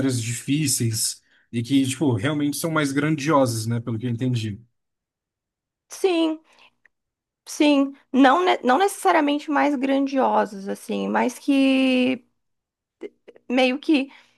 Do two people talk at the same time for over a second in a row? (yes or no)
no